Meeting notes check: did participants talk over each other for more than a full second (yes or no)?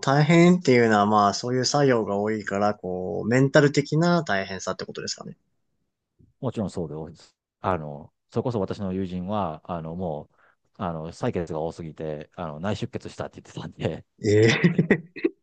no